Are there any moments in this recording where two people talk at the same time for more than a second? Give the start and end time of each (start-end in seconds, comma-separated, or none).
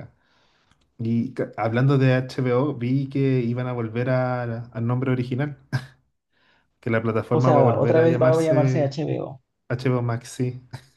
7.3-8.9